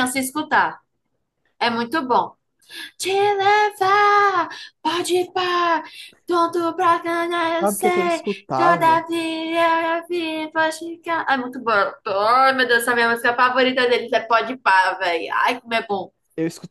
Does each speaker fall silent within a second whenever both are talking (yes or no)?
no